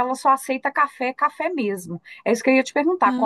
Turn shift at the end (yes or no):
no